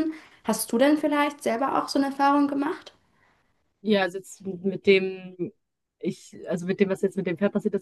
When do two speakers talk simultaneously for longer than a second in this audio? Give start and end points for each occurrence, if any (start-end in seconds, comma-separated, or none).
none